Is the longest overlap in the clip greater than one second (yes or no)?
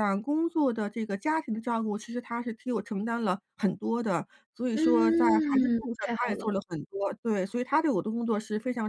yes